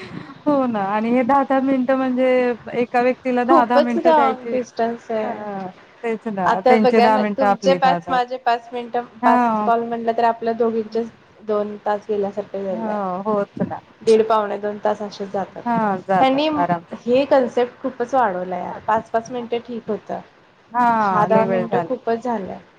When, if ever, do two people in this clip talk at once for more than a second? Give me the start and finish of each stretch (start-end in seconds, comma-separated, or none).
6.5-8.2